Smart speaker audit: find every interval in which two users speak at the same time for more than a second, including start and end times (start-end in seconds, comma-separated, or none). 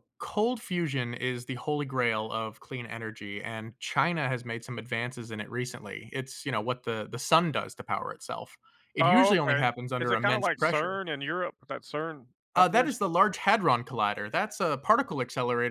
9.0-11.0